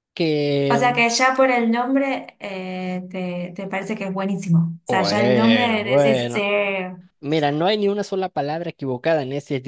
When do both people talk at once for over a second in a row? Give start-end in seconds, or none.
4.9-6.5